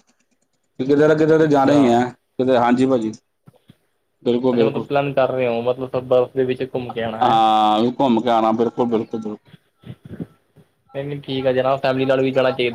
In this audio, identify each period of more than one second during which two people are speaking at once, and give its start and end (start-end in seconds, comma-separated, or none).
none